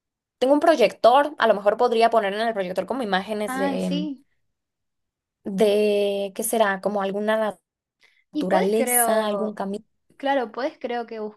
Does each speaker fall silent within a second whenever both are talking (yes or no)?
no